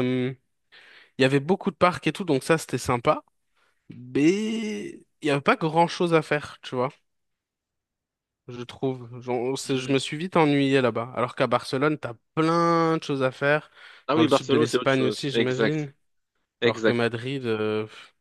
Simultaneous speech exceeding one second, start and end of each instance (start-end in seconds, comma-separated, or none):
14.2-15.9